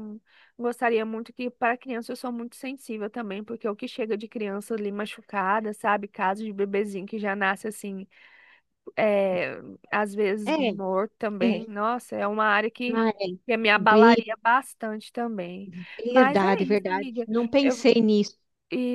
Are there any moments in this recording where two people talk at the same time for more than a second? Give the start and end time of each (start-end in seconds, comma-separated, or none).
16.1-17.9